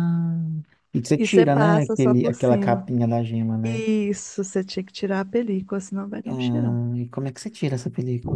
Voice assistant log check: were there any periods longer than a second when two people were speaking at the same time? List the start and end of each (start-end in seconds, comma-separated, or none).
1.2-2.8